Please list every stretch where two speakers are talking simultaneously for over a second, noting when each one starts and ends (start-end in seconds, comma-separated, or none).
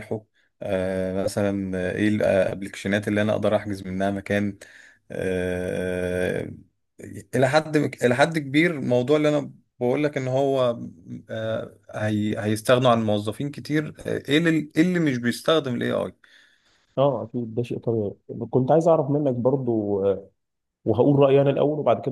none